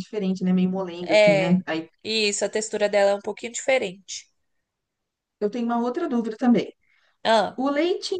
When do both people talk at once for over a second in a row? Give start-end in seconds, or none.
none